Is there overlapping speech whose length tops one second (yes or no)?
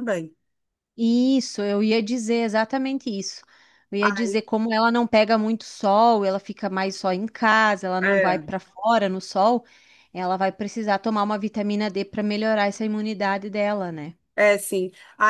no